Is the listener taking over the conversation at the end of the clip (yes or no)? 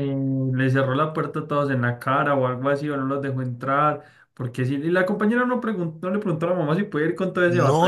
yes